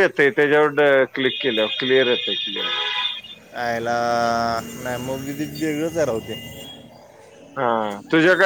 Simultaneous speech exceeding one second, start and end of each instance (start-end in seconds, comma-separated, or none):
none